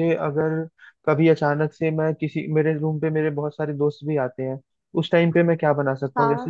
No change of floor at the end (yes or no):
yes